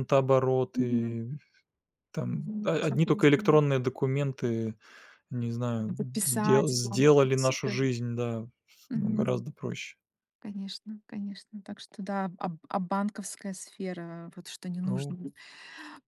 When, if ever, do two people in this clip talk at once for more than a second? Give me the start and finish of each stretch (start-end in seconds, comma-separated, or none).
2.3-3.6, 5.9-7.8